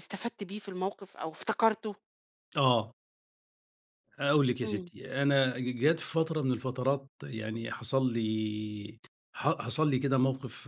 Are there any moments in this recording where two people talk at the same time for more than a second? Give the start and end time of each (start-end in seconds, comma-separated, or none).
none